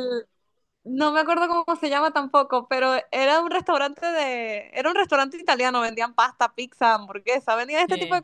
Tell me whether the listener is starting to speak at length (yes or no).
no